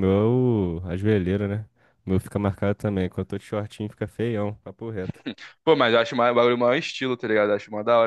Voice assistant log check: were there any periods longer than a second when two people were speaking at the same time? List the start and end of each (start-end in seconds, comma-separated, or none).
none